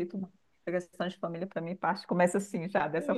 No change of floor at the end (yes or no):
no